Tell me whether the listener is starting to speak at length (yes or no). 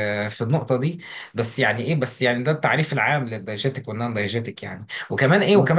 no